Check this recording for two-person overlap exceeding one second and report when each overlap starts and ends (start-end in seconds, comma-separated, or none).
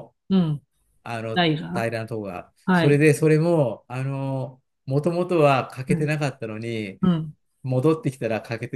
none